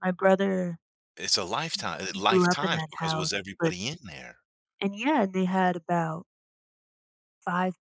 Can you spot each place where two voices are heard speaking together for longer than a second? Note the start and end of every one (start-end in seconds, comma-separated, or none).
1.7-3.7